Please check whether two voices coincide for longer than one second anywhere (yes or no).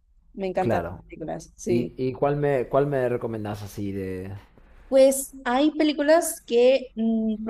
no